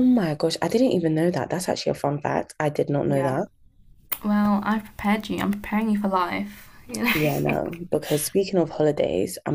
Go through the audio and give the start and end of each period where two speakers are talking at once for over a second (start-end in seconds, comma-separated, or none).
none